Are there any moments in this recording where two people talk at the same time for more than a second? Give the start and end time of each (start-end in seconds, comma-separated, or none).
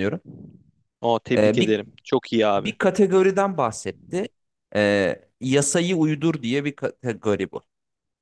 none